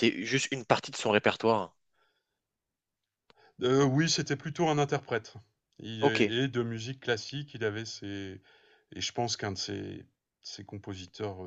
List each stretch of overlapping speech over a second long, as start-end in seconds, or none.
none